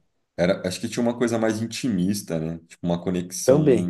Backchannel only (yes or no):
yes